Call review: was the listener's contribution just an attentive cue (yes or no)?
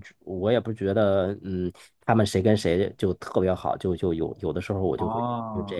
no